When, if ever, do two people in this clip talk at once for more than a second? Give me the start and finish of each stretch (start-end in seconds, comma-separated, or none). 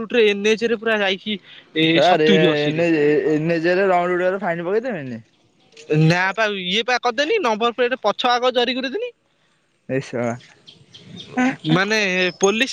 none